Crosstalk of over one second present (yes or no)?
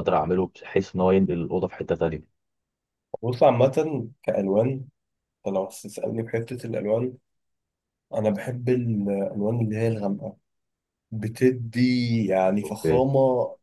no